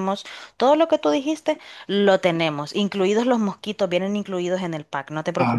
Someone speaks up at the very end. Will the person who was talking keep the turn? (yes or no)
no